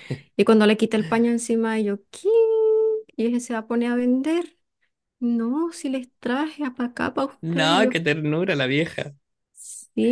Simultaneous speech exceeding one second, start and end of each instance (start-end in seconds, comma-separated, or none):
none